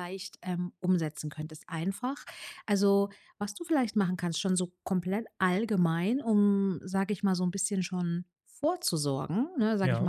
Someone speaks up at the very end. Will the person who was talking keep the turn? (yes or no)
yes